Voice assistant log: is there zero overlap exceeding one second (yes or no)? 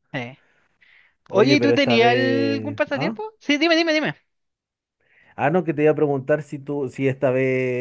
no